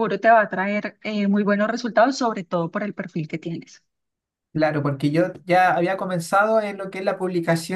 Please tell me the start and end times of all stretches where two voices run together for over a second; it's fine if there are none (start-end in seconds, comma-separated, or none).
none